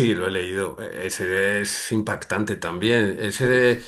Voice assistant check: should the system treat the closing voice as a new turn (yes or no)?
no